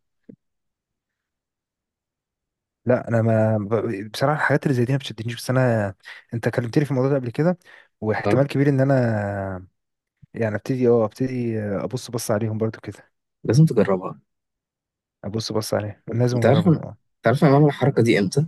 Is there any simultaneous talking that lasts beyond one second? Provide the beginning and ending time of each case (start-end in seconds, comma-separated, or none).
none